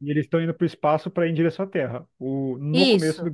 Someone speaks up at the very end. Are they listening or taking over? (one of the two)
listening